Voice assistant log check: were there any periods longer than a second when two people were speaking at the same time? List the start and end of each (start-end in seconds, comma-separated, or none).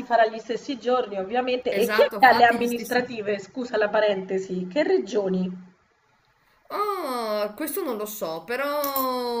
1.7-3.0